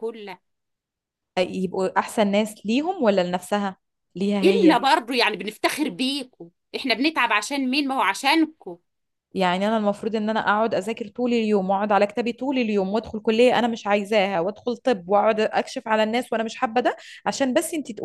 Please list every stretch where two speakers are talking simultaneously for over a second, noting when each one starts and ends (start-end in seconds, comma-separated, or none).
none